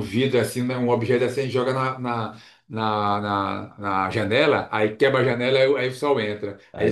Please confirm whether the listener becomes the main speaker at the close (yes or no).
no